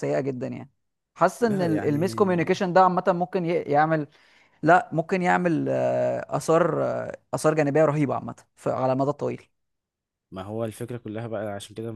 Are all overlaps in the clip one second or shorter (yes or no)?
no